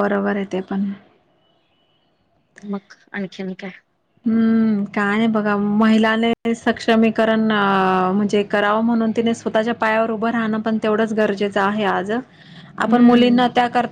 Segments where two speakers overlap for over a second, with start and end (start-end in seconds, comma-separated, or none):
none